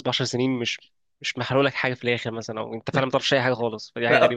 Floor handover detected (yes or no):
yes